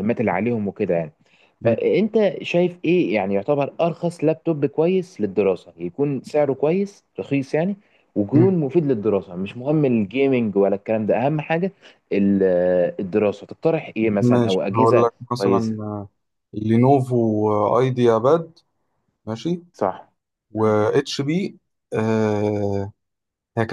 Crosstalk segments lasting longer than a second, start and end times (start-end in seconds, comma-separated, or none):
14.2-15.8